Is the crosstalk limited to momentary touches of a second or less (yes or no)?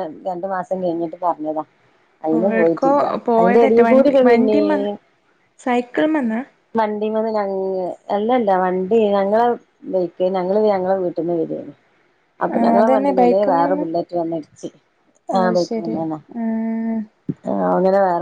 yes